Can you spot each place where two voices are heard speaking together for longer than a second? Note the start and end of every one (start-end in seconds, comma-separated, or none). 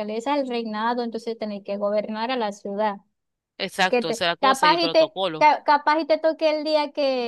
3.9-5.5